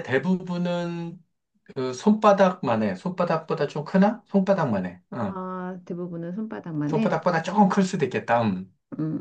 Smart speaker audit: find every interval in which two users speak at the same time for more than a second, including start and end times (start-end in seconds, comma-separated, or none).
none